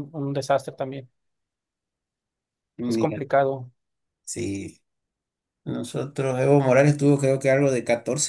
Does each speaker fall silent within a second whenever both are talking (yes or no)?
yes